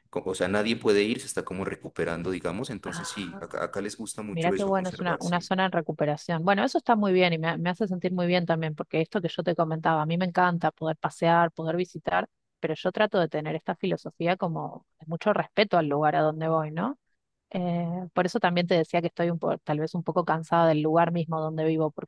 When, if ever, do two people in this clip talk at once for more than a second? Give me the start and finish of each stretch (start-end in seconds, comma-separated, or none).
4.3-5.5